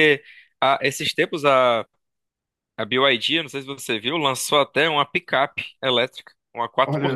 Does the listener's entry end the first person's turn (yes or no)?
no